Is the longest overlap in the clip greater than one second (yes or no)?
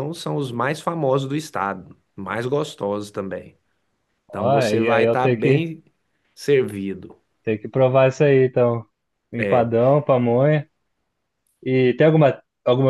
yes